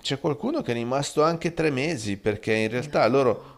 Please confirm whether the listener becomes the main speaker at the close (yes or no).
no